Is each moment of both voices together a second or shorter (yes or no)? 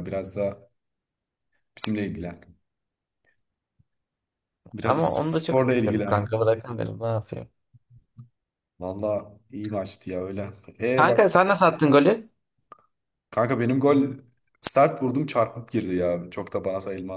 no